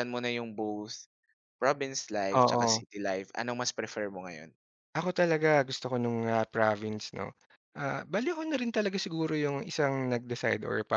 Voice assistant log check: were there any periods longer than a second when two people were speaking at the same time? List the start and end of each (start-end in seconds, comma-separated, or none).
none